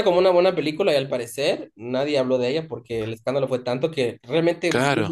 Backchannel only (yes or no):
yes